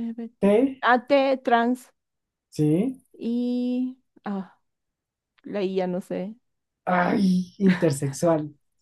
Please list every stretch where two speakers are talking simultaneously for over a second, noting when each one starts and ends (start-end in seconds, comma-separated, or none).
none